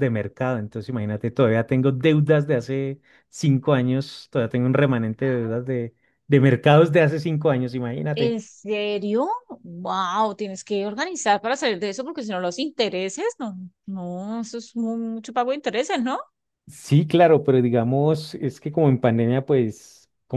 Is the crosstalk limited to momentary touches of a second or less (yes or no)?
yes